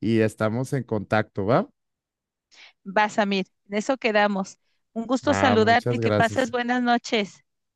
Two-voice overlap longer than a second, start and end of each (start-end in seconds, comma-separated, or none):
5.2-6.5